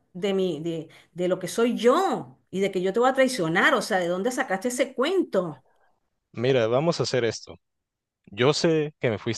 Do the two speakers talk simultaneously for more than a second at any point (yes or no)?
no